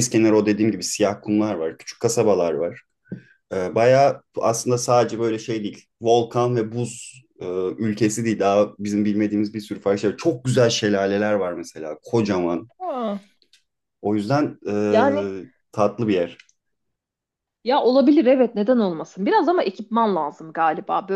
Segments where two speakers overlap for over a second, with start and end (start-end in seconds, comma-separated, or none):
none